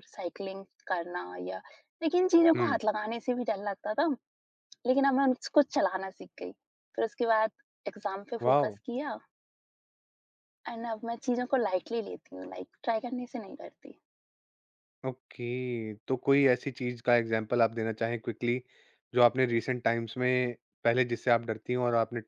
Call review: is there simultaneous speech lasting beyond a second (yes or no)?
no